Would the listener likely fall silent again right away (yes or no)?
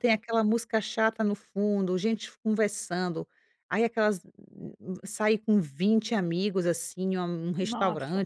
yes